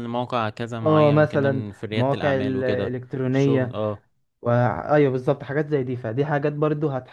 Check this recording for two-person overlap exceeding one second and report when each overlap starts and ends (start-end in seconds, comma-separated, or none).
0.8-3.8